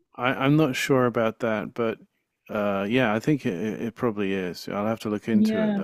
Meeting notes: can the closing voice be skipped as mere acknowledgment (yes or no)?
no